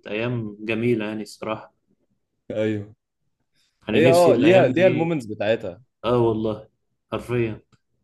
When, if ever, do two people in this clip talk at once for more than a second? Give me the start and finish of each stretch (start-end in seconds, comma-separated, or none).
3.9-5.2